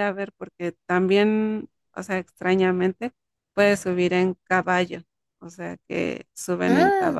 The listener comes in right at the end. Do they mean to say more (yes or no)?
no